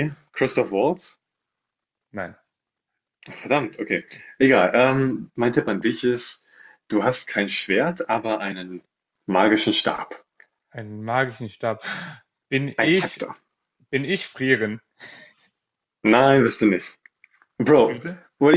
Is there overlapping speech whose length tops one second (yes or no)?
no